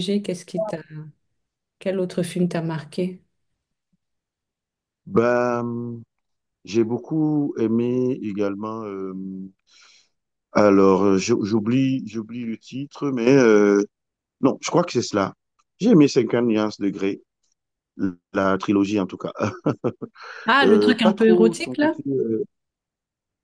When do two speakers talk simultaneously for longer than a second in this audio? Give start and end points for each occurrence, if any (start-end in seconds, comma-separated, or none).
20.6-21.9